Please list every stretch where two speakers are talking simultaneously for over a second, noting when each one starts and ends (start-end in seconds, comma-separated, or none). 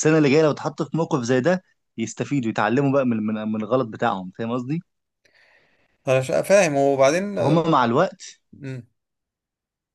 none